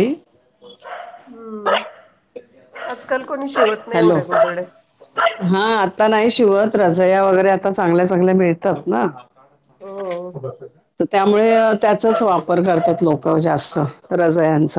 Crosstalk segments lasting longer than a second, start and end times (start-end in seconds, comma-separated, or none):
none